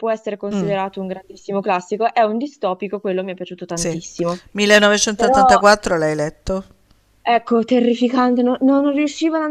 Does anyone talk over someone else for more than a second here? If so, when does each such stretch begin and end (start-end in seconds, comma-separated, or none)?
none